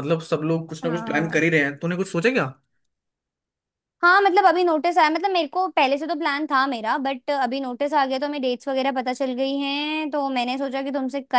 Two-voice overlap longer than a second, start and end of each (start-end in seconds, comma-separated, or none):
none